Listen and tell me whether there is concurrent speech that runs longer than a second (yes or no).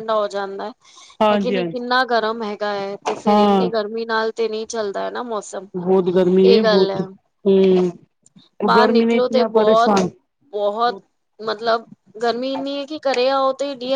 no